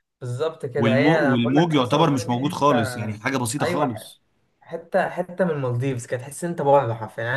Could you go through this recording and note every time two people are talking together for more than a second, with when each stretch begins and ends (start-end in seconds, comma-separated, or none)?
0.8-2.8